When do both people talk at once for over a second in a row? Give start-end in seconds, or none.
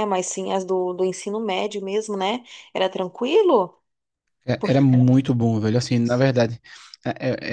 none